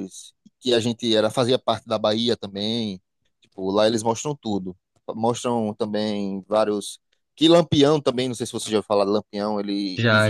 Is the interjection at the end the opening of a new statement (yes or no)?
no